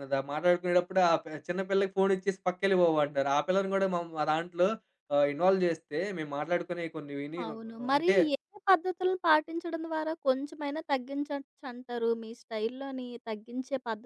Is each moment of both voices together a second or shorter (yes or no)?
yes